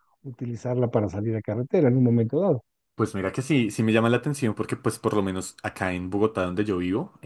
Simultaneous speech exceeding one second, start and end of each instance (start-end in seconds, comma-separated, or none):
none